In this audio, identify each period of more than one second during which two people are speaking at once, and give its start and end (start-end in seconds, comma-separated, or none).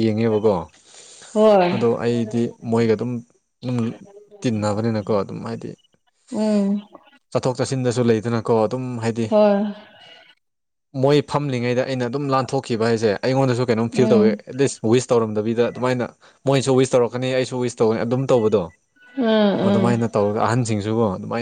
none